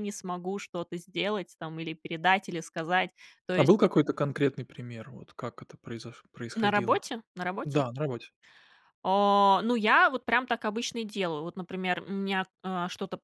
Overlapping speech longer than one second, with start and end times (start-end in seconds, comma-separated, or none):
none